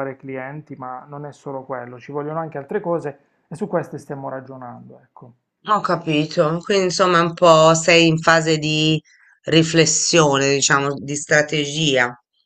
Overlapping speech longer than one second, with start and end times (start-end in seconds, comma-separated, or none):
none